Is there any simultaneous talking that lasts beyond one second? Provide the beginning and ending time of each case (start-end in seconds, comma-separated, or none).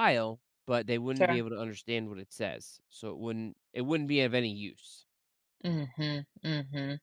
none